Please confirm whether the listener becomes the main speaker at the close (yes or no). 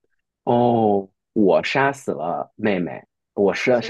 no